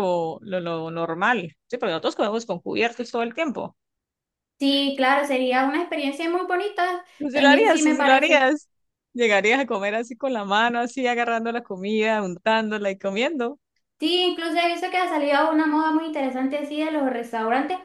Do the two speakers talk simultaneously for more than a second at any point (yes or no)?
yes